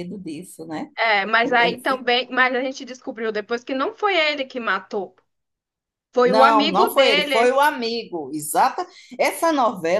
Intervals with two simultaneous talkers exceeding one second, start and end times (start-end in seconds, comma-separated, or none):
6.2-7.6